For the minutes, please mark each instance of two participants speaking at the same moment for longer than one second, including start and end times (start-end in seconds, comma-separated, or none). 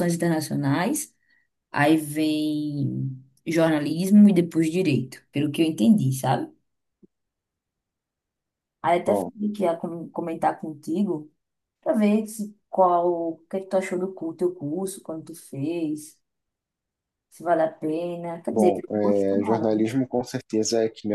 18.5-19.8